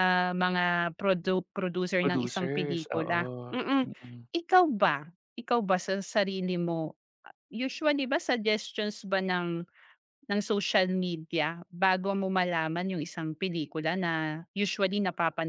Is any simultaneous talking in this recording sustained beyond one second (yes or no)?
yes